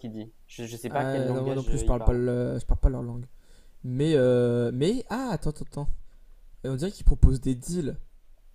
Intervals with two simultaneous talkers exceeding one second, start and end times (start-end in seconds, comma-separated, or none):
0.9-2.2